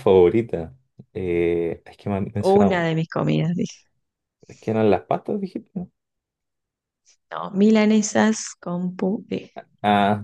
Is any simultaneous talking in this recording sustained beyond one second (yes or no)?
no